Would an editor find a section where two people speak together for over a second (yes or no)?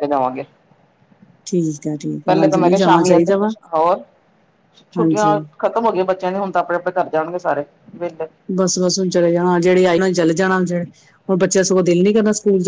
yes